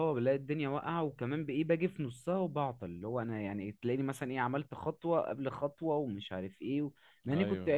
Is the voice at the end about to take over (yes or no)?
no